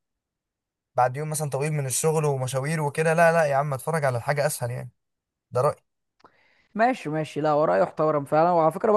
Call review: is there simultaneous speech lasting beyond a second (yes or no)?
no